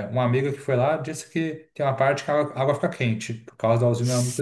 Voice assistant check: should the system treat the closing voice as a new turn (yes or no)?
yes